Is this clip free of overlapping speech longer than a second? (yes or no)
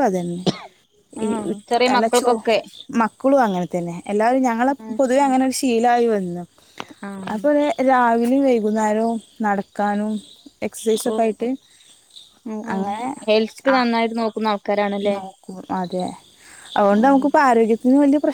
yes